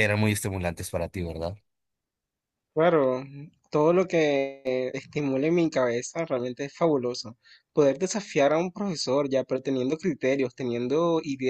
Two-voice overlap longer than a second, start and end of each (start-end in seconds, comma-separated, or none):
none